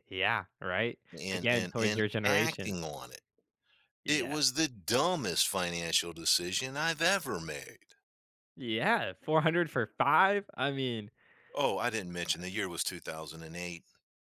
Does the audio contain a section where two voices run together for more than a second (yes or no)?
yes